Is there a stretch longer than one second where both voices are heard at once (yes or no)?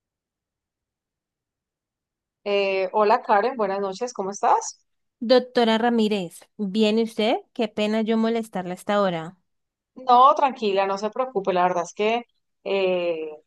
no